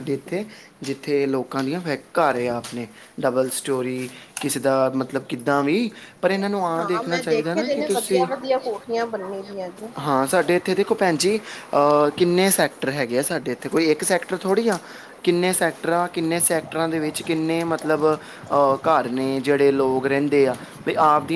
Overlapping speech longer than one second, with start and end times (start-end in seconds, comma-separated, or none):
6.8-8.3